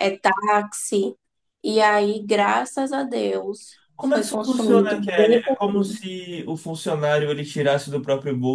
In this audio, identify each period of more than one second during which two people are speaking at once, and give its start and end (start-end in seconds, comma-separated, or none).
3.9-5.4